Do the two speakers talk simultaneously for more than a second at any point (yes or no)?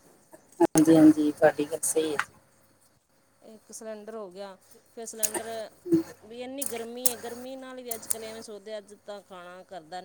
no